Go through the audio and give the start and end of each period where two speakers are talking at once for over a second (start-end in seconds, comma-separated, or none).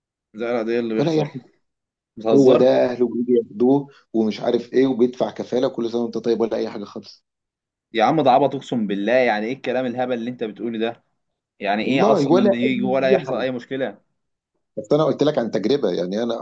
11.8-13.4